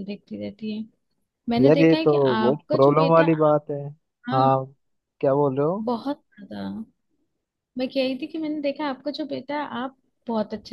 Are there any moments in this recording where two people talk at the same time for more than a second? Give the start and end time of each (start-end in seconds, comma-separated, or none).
1.6-3.2